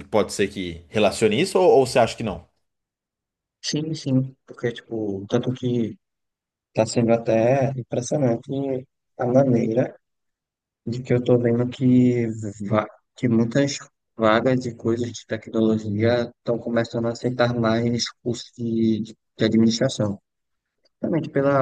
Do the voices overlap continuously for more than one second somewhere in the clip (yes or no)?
no